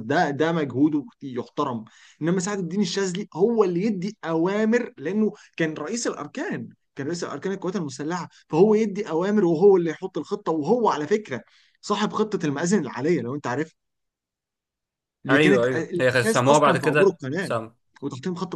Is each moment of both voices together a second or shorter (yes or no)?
no